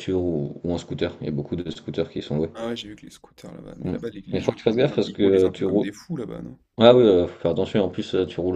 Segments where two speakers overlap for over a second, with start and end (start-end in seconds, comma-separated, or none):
3.8-5.8